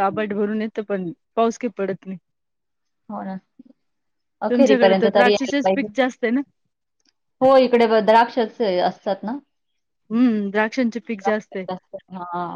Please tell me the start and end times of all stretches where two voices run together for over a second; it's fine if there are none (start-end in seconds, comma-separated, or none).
4.5-5.9